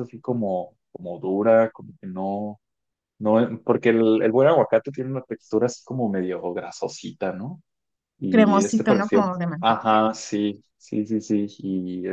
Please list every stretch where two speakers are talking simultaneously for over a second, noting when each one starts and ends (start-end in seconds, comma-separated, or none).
8.3-10.0